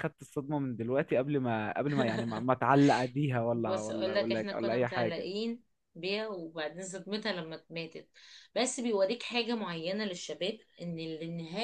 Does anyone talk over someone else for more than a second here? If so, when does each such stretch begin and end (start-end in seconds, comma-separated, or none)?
3.5-5.3